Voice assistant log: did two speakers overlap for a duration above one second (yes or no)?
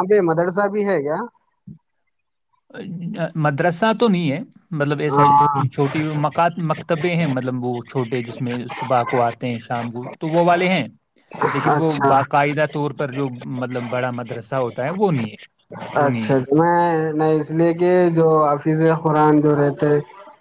no